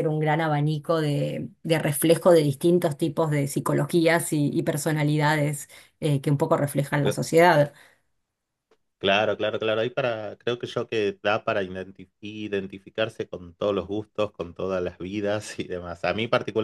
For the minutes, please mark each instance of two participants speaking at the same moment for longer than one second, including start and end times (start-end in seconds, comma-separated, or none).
none